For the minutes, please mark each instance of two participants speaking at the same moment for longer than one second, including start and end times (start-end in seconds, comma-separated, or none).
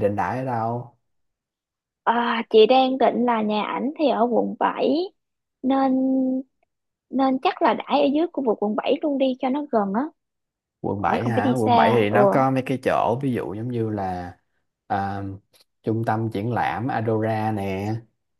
11.0-12.2